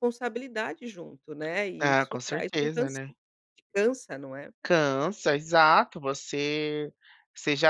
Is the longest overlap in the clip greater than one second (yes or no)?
yes